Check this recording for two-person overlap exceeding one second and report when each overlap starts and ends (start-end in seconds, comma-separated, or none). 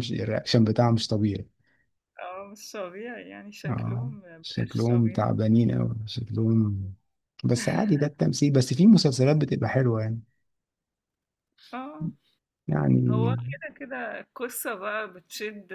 3.7-5.3